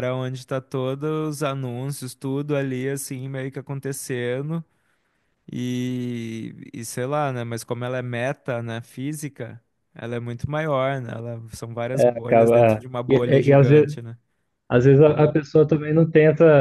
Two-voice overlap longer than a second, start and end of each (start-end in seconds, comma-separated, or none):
11.9-13.9